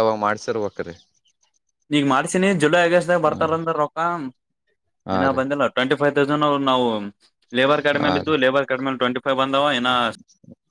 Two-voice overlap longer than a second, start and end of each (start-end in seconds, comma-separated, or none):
none